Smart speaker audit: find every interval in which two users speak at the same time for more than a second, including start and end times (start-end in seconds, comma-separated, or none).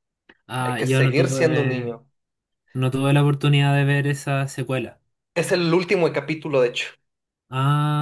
0.6-1.9